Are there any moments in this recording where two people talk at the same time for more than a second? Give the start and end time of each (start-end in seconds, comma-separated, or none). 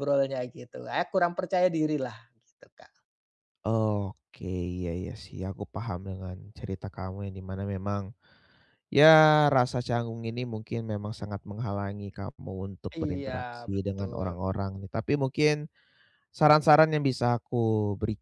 12.9-14.3